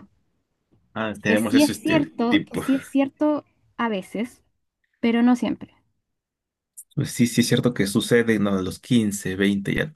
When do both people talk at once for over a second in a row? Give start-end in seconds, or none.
1.3-2.6